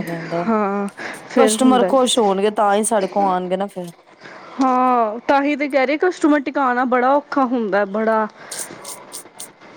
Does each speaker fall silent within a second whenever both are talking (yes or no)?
no